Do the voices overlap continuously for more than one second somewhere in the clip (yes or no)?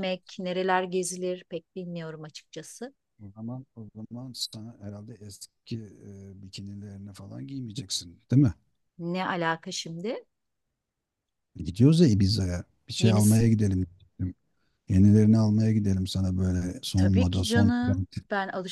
yes